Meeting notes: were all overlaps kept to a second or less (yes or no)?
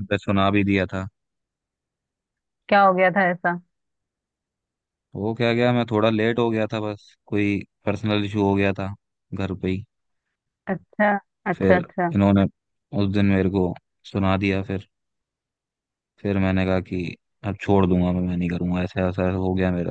yes